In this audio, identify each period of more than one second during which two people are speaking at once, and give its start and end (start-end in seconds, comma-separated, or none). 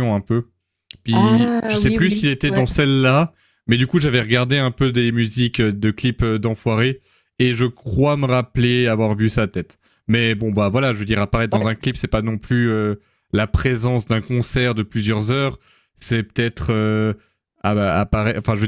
1.1-2.7